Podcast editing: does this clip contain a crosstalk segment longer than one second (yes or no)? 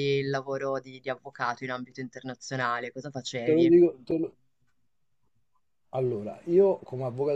no